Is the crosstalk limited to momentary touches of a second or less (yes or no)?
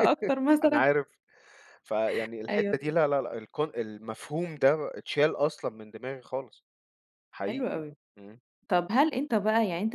yes